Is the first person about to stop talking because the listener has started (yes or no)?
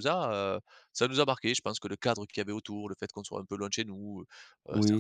yes